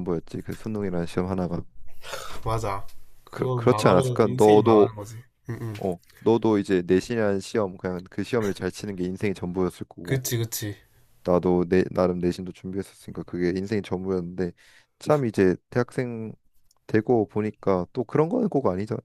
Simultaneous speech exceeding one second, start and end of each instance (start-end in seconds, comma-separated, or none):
3.3-4.9